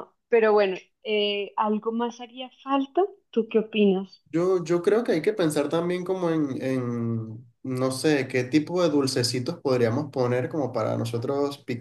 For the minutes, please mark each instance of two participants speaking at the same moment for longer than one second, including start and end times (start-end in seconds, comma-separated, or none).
none